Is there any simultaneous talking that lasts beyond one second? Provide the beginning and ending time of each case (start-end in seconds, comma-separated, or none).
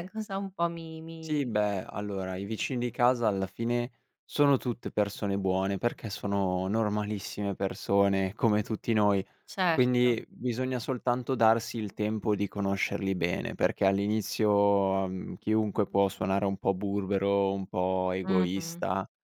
none